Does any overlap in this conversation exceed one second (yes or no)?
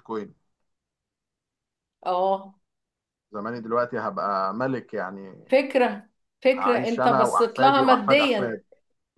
yes